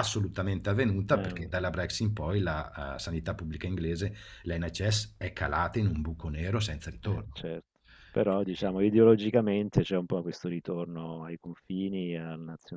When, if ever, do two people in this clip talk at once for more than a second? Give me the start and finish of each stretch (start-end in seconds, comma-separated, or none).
none